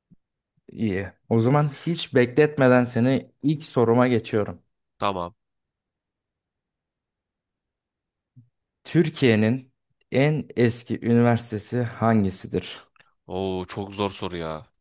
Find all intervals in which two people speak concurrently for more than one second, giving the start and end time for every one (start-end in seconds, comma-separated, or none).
none